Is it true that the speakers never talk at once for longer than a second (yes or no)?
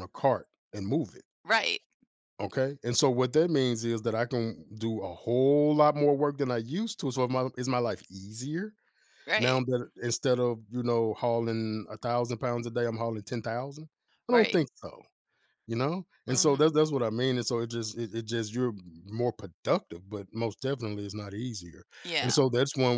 yes